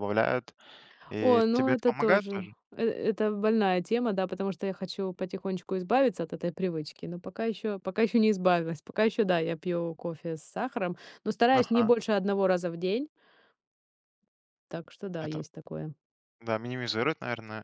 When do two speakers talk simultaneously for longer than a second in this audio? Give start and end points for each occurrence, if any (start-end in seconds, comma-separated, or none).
1.2-2.5